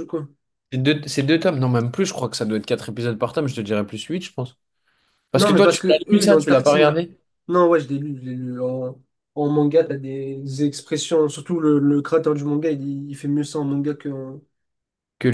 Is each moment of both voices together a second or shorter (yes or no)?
no